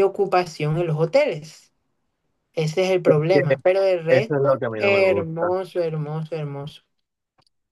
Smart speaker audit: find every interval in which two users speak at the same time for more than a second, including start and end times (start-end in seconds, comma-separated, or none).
4.1-5.5